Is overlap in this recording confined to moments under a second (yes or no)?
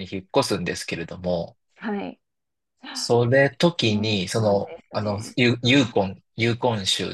no